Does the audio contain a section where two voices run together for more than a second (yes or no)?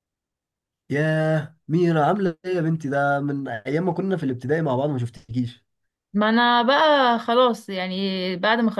no